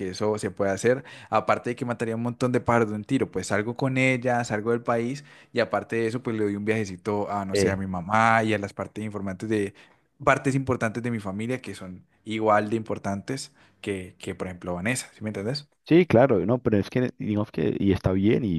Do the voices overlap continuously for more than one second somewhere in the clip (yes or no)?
no